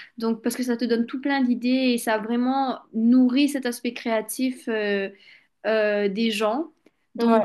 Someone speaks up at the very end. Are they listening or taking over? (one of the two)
listening